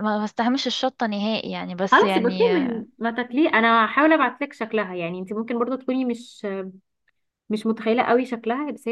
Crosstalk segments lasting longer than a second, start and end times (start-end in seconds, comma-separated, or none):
none